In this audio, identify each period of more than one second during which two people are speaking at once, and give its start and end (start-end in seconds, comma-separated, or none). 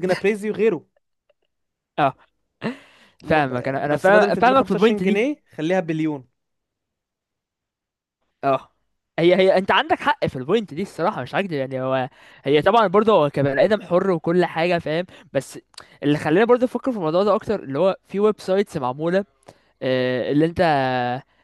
3.3-5.2